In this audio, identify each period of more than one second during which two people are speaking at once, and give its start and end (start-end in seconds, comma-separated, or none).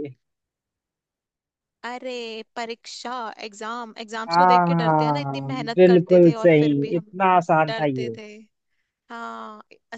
4.3-7.0